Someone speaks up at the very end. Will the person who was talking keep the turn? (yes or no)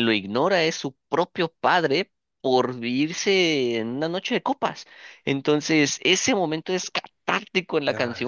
yes